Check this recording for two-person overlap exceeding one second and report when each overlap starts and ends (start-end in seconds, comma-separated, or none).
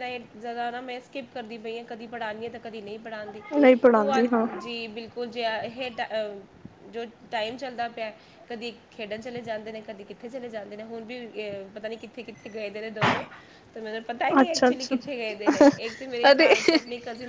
none